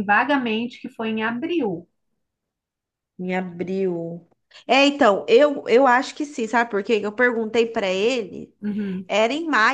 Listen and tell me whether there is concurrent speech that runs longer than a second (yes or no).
no